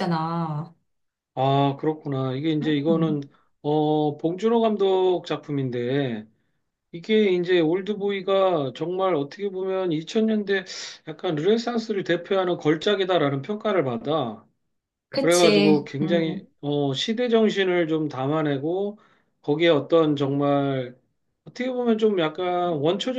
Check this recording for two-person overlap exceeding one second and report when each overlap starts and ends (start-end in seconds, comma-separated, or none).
15.2-16.4